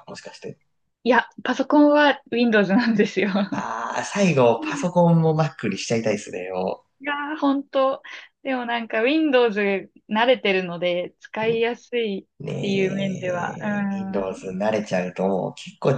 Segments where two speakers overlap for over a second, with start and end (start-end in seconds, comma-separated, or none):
12.4-13.7